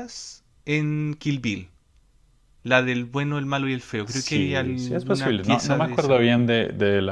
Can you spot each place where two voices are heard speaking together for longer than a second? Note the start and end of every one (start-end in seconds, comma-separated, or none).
4.0-6.2